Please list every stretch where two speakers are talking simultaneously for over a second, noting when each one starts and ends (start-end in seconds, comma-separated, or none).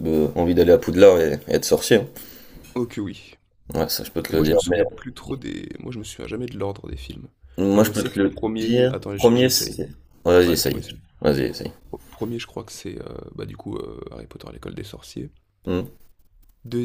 7.7-9.8